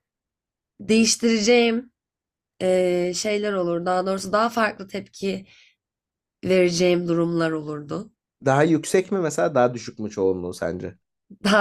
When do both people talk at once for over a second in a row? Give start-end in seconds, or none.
none